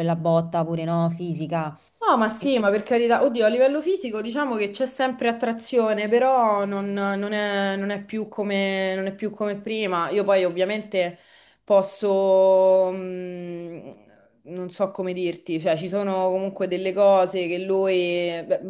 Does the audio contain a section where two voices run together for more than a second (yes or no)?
no